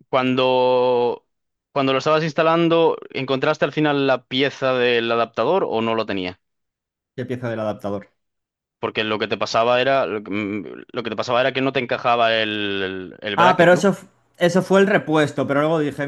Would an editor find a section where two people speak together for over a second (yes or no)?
no